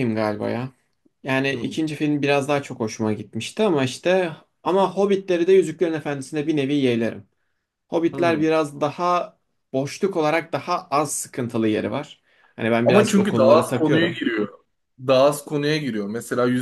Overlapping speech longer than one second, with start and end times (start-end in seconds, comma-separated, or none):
12.8-14.2